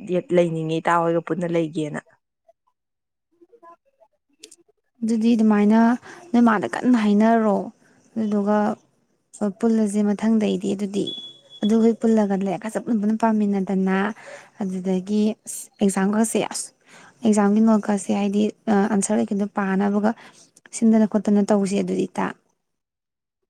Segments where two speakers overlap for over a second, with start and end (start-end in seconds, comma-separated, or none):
none